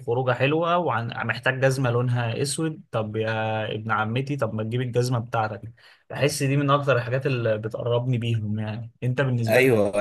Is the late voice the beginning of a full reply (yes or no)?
yes